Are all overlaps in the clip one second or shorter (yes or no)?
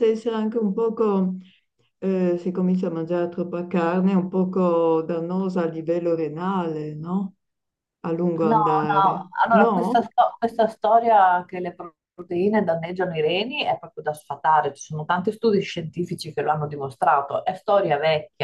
no